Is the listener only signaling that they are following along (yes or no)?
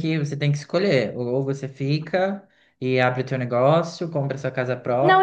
no